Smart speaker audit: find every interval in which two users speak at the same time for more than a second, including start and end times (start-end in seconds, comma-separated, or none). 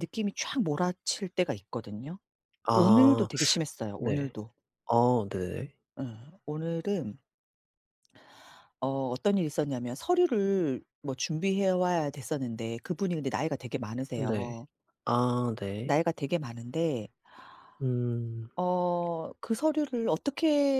none